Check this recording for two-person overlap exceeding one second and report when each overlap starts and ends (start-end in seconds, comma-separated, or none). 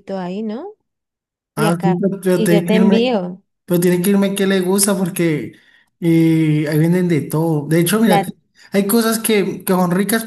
1.6-3.2